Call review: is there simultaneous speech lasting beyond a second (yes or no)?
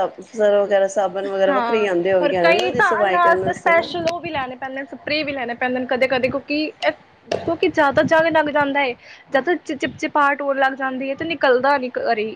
yes